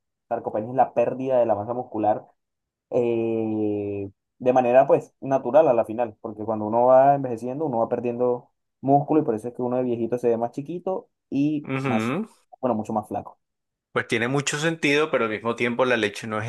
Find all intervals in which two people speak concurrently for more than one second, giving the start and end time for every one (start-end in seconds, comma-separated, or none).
none